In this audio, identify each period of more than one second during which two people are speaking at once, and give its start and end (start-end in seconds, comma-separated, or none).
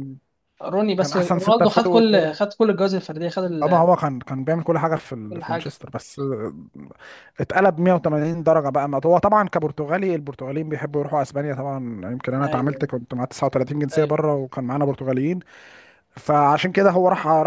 1.0-2.4